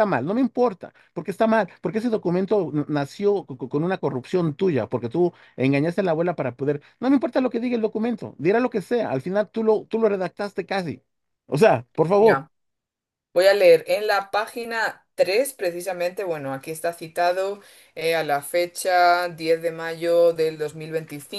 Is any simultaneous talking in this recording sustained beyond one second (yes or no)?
no